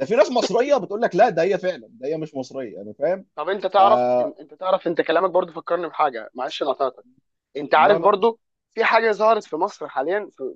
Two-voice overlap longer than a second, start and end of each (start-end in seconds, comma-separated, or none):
none